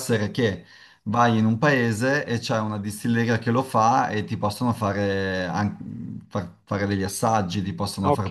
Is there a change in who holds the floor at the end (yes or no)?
no